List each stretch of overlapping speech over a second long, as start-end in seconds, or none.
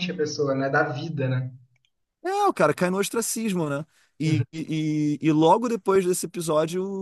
none